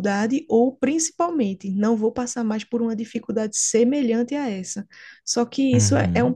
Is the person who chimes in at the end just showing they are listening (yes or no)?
yes